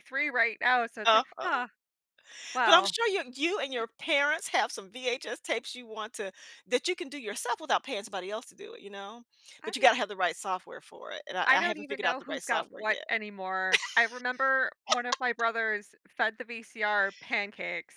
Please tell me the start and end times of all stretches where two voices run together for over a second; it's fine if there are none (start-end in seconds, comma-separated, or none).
11.5-13.1